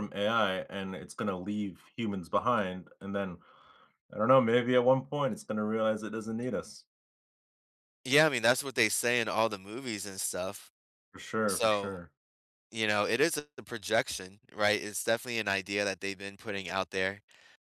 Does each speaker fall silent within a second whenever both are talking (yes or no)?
yes